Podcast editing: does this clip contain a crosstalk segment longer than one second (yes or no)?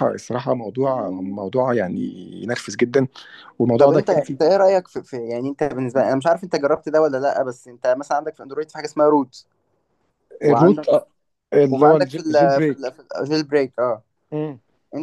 yes